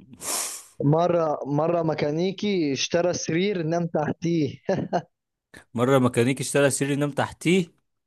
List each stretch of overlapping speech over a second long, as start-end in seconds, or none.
none